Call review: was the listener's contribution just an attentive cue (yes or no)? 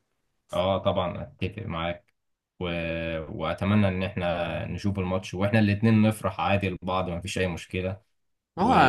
no